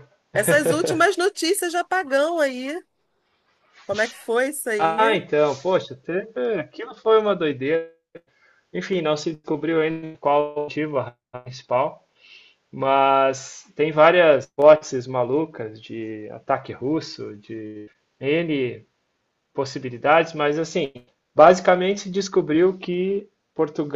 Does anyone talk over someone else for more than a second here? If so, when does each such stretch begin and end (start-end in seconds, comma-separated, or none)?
none